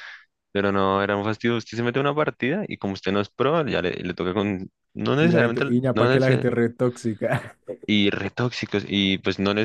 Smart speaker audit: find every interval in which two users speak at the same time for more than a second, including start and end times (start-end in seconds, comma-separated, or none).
5.1-6.5